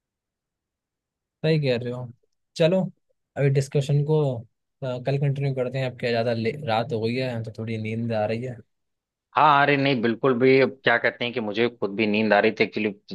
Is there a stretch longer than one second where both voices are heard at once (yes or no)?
no